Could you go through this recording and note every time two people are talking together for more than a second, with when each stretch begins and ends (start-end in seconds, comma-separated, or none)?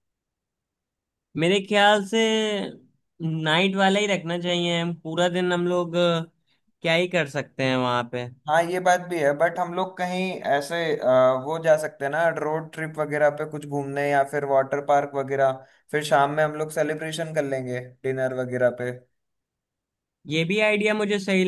none